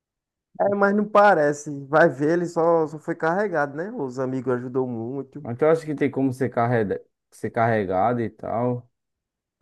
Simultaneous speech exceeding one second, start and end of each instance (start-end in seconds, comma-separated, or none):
none